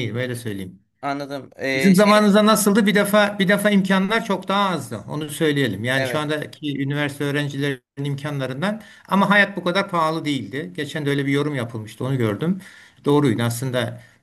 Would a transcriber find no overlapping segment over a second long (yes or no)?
yes